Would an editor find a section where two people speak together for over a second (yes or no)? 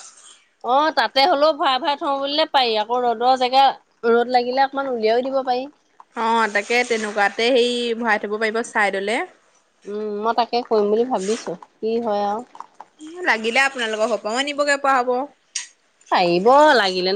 no